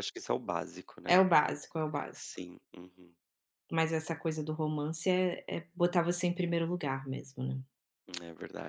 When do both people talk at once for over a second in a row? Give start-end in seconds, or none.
none